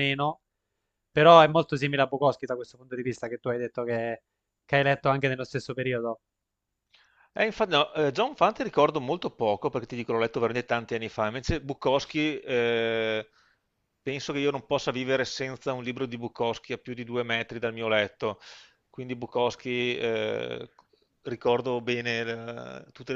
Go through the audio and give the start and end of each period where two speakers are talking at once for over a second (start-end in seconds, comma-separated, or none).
none